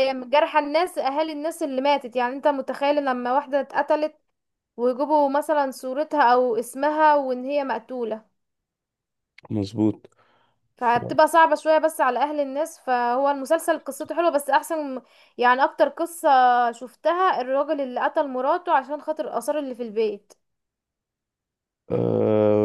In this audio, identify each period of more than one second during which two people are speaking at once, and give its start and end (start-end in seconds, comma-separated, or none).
none